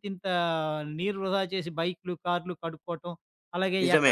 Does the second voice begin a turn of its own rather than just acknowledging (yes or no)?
no